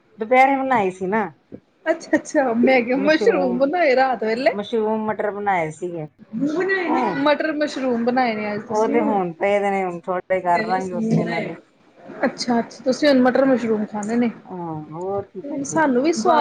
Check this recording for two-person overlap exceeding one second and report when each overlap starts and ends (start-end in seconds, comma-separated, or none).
none